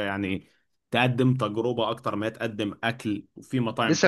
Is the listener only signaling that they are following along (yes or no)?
no